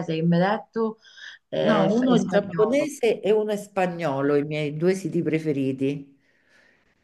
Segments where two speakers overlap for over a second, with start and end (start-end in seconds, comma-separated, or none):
1.6-2.9